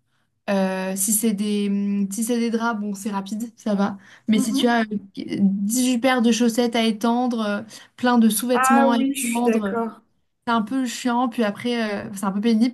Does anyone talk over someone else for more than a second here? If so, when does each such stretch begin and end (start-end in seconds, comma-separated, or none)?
8.5-9.8